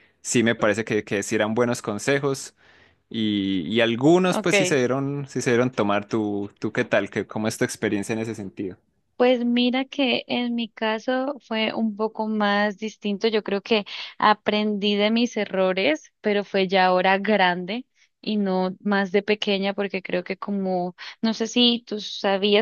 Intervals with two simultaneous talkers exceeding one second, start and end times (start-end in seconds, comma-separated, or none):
none